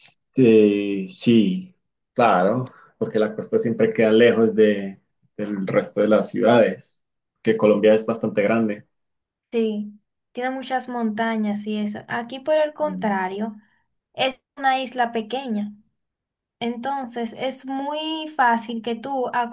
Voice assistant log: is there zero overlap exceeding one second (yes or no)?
yes